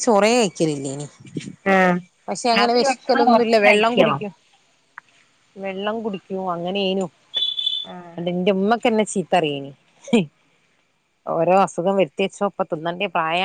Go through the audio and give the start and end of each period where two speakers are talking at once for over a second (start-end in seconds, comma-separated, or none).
2.6-4.2